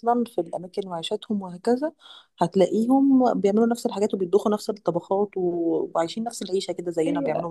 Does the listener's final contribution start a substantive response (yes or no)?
yes